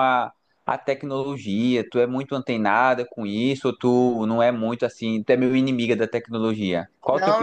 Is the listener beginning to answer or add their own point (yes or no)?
yes